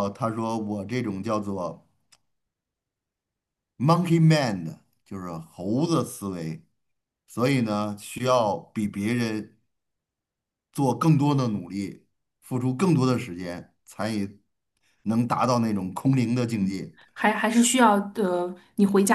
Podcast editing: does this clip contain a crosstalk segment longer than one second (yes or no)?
no